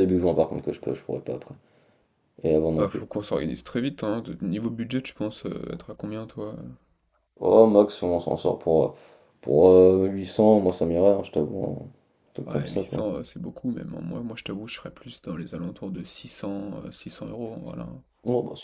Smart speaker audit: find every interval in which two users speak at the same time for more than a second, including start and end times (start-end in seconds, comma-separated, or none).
none